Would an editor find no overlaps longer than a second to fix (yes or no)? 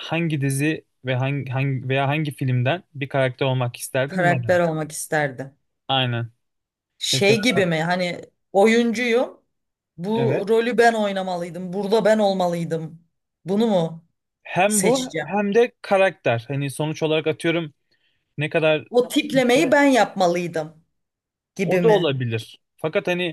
yes